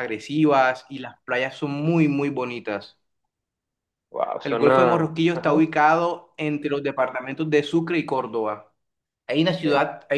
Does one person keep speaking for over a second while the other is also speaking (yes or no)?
yes